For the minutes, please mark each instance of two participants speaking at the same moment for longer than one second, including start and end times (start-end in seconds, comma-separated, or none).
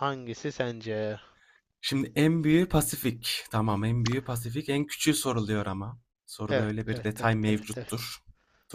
6.5-8.1